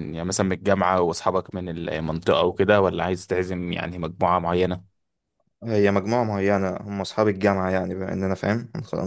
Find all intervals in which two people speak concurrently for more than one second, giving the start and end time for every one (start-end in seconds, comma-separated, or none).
none